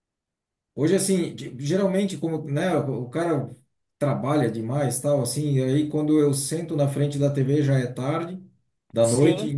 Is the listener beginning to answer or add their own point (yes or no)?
no